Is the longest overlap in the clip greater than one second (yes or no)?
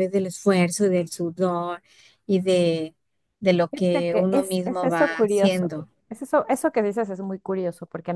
yes